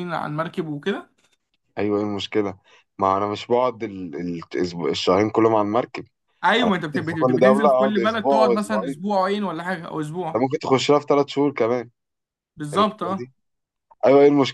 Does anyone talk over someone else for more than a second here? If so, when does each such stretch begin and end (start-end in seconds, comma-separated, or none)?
6.6-8.9